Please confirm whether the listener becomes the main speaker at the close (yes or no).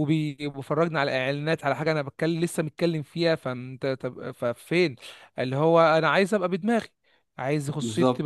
no